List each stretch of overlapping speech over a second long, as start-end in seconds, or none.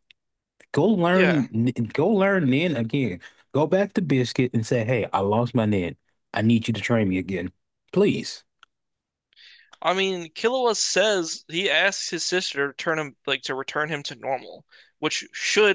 none